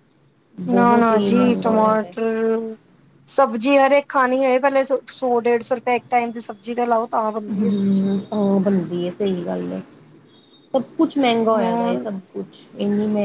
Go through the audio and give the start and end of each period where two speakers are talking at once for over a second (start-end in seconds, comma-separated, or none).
0.7-2.1